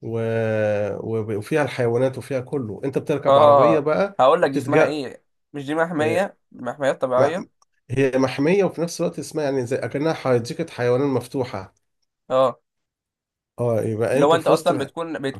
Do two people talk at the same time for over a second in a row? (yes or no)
yes